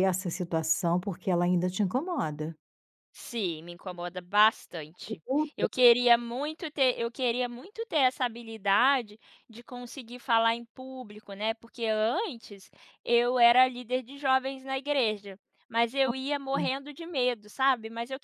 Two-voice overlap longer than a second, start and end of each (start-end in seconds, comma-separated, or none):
none